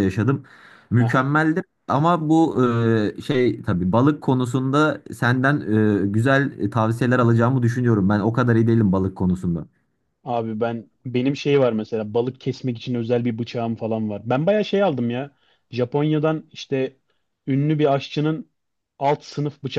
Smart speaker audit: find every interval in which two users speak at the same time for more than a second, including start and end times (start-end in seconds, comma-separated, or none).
none